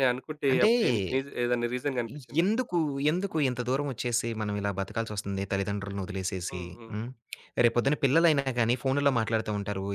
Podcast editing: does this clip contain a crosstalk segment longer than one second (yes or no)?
no